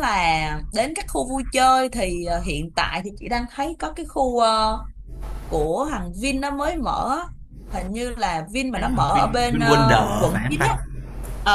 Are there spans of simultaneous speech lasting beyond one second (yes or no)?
yes